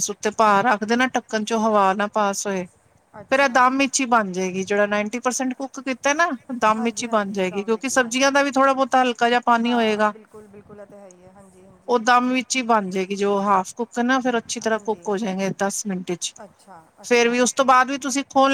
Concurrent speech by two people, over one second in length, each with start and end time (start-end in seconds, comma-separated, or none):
6.8-8.4